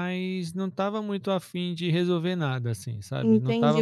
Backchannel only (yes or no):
no